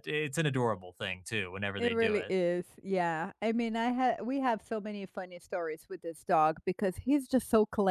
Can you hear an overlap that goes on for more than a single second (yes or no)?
no